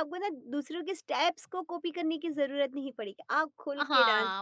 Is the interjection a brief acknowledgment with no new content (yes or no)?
no